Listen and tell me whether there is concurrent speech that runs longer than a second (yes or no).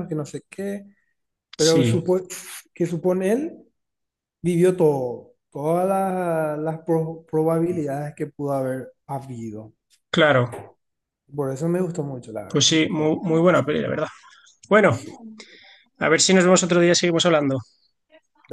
yes